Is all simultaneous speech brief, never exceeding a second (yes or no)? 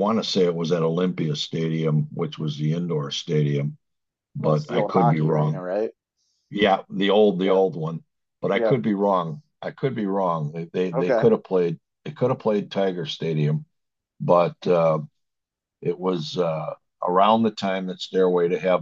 no